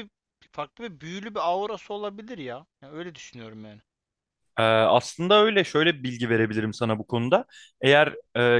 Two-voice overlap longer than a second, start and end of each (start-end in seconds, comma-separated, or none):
none